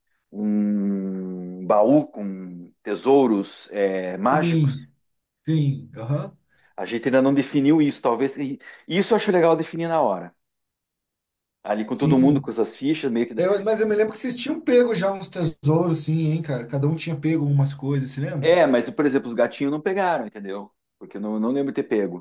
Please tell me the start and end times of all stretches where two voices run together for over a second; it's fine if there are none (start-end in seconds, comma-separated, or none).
none